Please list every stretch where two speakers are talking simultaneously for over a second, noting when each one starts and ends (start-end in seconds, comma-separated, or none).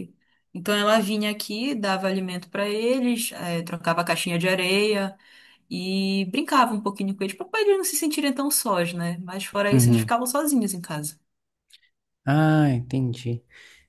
none